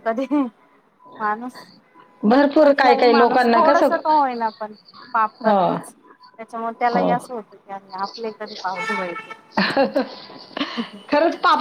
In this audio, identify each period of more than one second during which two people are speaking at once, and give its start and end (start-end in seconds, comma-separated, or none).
2.6-4.0